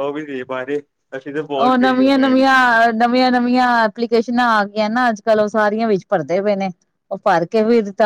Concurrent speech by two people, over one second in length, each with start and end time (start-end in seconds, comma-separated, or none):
none